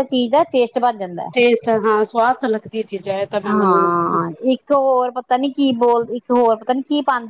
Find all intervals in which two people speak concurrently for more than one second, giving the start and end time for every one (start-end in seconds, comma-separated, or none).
none